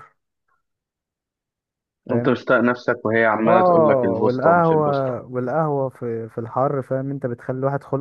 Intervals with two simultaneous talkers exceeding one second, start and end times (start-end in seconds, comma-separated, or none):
3.5-5.2